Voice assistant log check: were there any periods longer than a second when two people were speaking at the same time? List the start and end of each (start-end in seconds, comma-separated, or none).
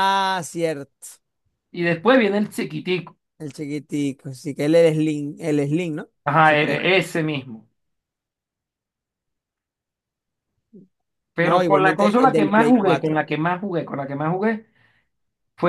11.4-13.3